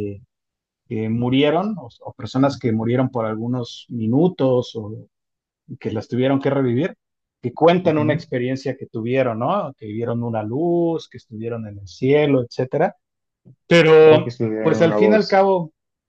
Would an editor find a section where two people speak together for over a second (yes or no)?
yes